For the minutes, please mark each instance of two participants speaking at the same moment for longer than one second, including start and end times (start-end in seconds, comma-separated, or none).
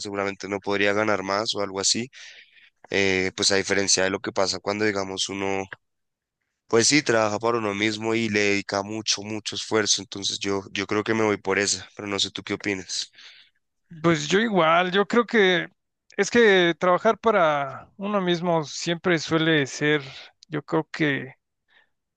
none